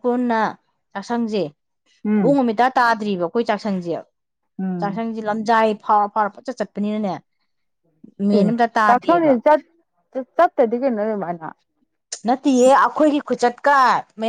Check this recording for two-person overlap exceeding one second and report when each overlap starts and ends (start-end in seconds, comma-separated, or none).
none